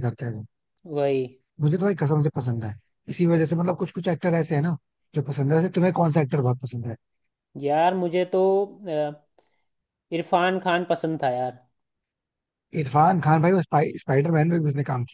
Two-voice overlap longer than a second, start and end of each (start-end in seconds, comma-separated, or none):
none